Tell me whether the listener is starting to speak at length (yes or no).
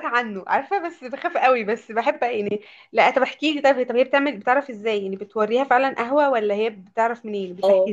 yes